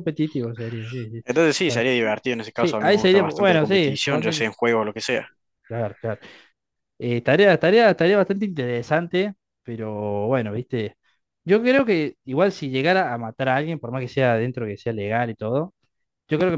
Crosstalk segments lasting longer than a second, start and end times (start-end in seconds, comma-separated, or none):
2.5-4.5